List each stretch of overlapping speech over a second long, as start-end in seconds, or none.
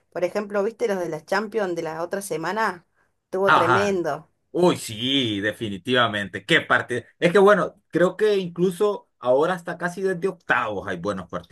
none